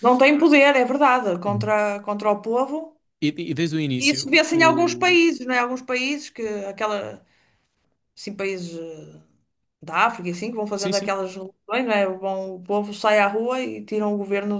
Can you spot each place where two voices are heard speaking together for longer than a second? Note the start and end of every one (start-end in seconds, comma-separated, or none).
4.0-5.2